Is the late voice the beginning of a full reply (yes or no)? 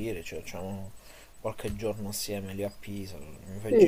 yes